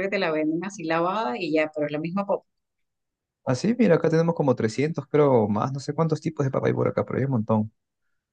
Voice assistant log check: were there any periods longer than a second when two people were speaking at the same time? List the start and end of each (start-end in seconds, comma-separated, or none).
none